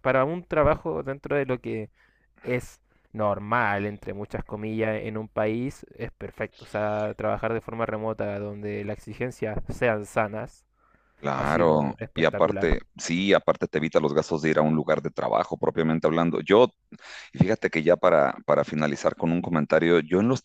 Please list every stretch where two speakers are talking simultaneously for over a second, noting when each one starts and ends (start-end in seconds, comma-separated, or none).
11.4-12.7